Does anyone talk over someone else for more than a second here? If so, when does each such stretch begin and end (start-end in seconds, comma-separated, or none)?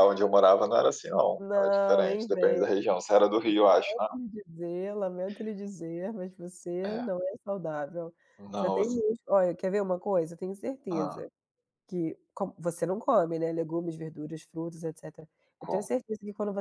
1.4-2.7